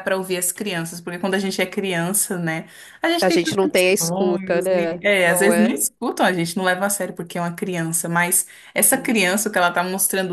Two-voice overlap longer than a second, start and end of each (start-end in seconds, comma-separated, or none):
3.2-5.8